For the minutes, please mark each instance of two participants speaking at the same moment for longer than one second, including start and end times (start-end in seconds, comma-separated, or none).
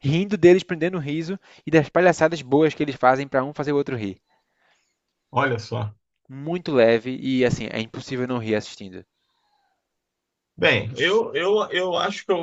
none